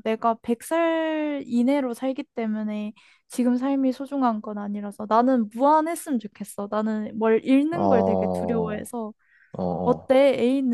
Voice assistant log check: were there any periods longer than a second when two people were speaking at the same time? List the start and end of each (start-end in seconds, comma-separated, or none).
7.7-8.9